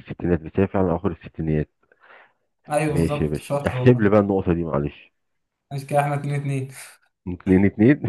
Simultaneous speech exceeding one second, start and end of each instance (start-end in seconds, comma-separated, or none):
2.9-4.1